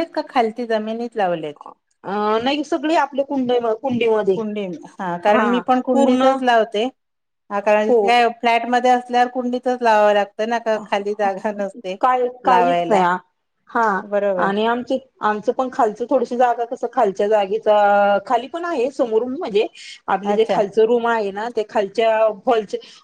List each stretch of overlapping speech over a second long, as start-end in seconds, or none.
none